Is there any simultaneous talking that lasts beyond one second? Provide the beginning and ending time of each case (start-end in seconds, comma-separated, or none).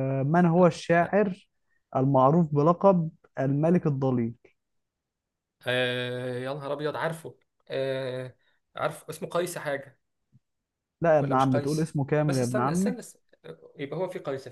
11.2-13.0